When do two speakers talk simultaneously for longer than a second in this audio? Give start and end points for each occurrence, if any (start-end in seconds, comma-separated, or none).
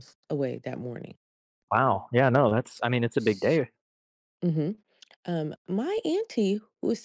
none